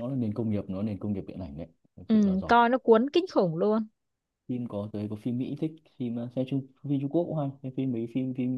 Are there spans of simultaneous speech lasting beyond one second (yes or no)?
no